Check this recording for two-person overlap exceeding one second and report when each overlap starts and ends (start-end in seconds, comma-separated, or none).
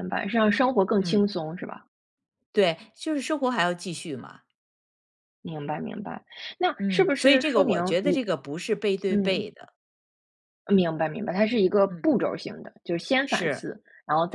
6.8-8.2